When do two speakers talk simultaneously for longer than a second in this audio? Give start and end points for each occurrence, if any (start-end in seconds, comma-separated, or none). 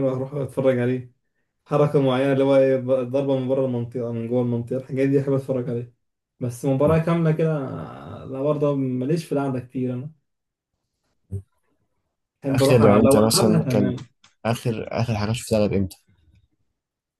12.5-13.9